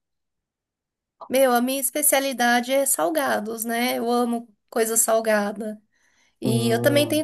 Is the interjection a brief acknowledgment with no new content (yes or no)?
yes